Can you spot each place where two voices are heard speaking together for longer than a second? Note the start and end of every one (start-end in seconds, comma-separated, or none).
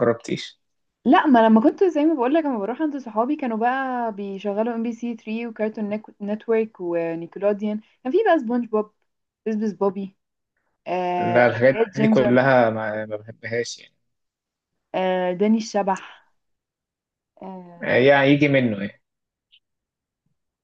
11.2-12.5